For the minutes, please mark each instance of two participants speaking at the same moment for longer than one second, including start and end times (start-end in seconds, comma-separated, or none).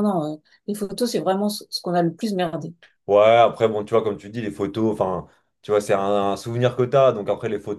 none